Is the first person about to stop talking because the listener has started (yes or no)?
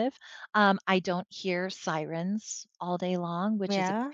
no